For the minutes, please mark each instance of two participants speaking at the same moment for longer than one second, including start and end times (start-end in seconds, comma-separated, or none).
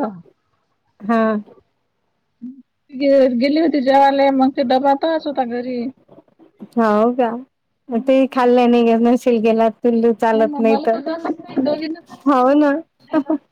none